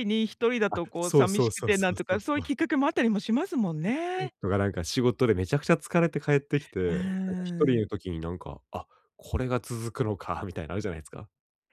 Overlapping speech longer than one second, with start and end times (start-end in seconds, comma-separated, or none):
0.7-2.5